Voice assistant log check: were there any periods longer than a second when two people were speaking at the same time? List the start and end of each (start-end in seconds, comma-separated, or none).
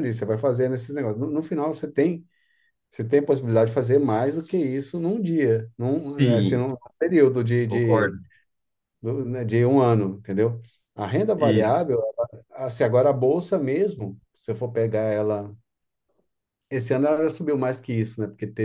none